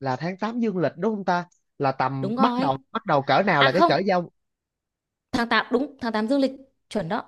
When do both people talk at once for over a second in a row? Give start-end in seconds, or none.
none